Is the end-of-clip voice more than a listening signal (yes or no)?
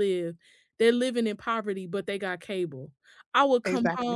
no